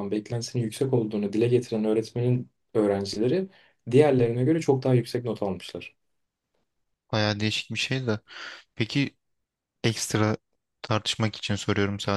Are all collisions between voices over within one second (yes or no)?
yes